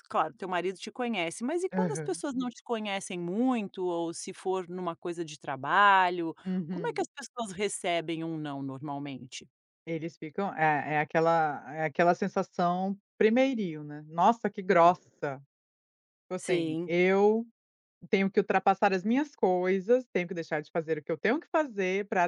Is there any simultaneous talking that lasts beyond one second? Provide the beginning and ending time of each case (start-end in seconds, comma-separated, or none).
none